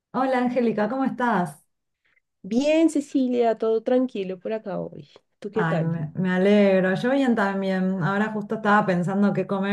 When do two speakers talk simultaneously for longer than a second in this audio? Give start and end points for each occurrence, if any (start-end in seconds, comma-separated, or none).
none